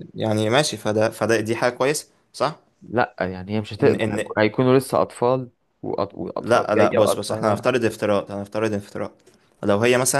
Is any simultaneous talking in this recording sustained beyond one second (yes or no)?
yes